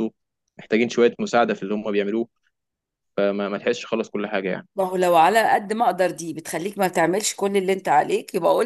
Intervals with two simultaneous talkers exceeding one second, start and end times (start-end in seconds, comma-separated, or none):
none